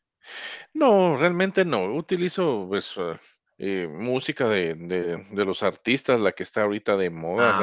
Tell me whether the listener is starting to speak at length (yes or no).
no